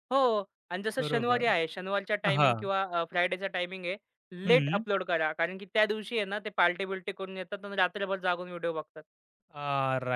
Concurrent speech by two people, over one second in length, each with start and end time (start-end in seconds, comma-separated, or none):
none